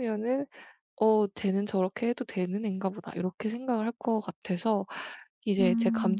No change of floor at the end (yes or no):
yes